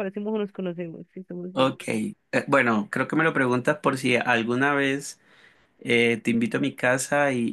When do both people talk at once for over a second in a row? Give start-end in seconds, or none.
none